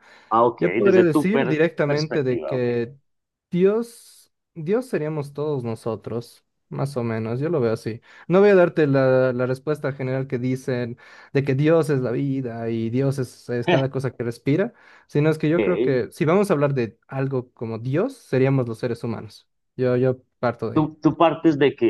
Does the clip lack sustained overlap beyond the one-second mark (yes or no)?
no